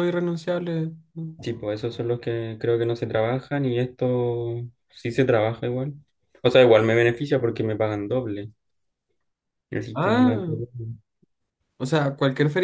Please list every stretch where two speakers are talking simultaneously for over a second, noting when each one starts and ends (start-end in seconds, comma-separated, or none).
none